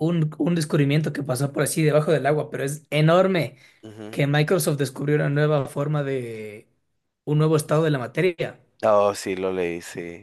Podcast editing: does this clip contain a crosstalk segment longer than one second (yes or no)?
no